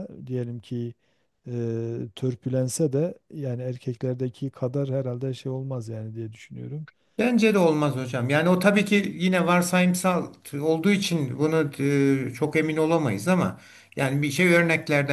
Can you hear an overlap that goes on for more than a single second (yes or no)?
no